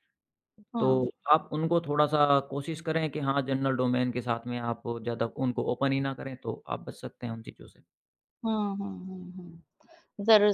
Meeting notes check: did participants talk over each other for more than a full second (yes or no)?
no